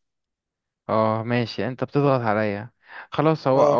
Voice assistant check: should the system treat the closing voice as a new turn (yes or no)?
no